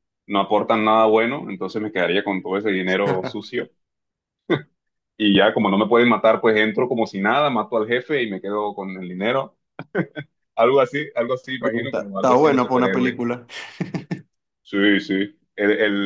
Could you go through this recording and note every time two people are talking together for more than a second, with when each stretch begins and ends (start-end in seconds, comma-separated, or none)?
11.6-13.2